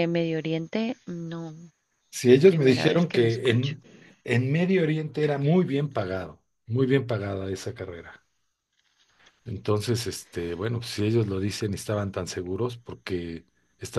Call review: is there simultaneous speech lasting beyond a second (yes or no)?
yes